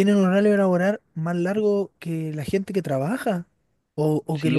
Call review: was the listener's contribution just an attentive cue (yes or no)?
no